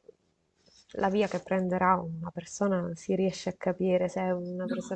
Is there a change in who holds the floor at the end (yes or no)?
no